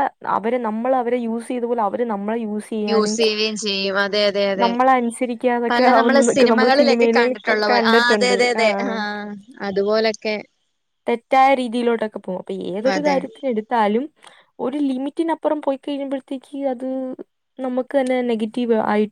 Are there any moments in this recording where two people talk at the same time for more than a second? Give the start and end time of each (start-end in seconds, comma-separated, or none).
5.7-8.6